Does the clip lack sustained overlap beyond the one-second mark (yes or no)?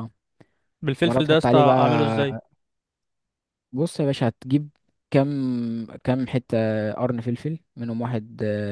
no